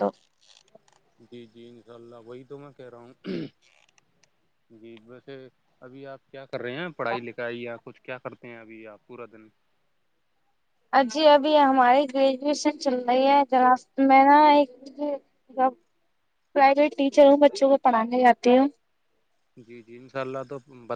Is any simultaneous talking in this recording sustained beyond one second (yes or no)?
no